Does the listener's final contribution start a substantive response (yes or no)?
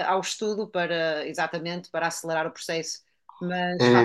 yes